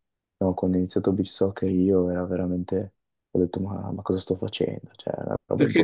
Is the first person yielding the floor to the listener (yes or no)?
yes